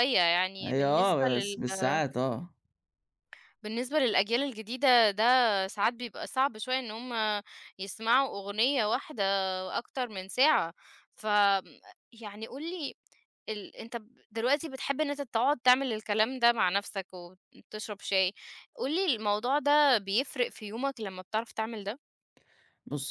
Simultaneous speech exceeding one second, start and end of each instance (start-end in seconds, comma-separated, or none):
0.6-2.0